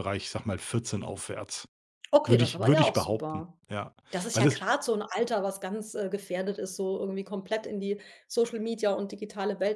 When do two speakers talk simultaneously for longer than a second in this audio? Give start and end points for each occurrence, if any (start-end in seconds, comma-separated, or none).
2.3-3.6